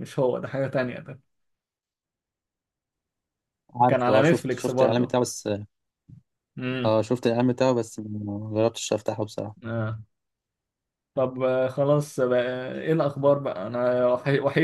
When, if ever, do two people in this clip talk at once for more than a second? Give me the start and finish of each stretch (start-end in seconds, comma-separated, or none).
3.9-5.2